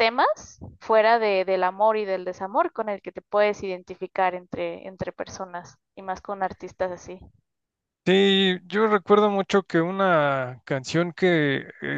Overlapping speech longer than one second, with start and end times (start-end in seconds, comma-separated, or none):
none